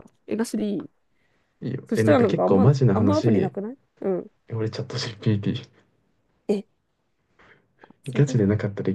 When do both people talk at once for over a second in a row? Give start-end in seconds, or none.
1.9-3.5